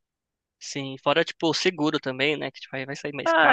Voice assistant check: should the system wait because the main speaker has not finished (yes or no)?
no